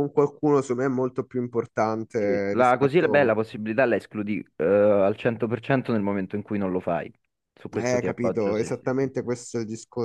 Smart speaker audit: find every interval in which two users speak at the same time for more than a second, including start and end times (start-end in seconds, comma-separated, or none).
2.2-3.4, 7.7-9.3